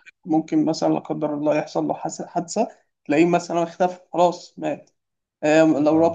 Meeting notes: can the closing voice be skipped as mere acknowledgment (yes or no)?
yes